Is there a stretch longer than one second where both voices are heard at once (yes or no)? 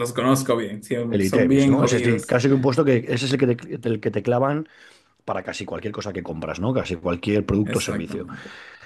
yes